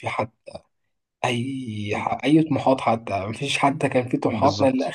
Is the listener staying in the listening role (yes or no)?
yes